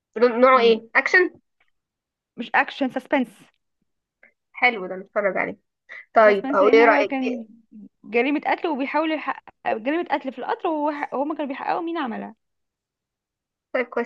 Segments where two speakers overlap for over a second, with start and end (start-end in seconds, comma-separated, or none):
6.2-7.5